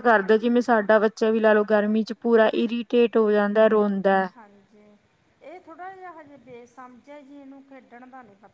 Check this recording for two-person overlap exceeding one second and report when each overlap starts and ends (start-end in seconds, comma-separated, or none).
none